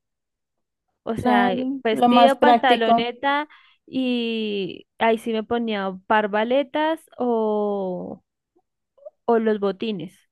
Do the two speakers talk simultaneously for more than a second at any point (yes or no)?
yes